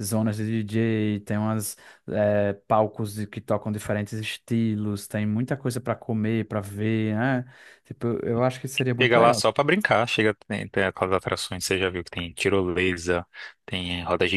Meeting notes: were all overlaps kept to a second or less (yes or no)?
yes